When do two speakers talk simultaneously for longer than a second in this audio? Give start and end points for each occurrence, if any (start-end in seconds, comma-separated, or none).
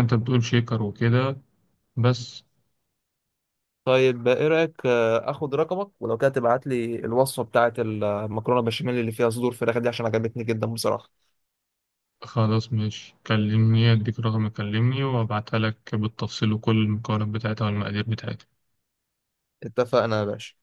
none